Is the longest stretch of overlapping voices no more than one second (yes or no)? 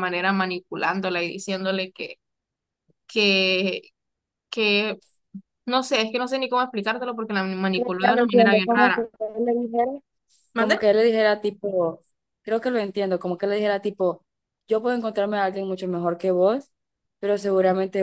no